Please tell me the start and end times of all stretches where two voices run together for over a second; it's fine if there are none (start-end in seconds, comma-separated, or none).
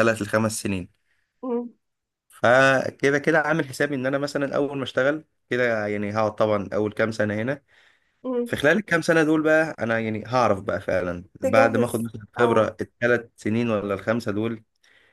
11.4-12.7